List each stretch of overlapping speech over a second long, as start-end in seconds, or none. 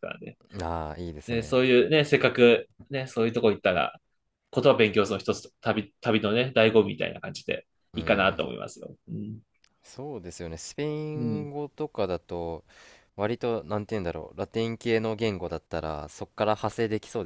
none